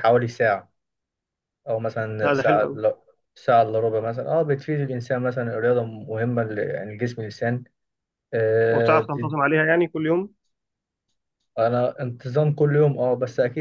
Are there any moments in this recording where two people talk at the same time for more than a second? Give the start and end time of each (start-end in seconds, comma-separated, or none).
none